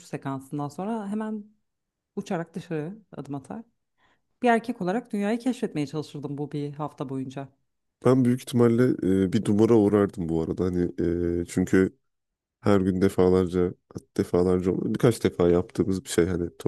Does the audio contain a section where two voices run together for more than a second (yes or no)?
no